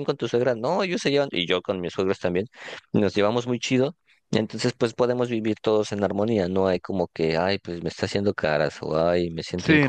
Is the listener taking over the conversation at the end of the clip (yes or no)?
yes